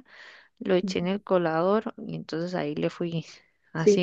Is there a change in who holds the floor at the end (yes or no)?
yes